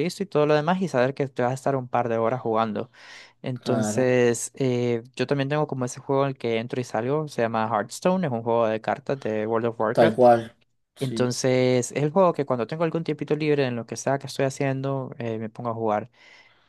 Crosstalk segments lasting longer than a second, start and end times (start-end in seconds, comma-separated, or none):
none